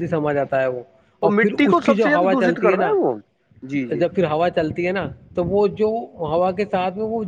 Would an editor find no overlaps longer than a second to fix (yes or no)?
no